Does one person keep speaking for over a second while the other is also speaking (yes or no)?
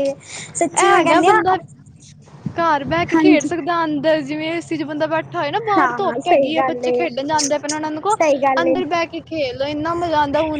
yes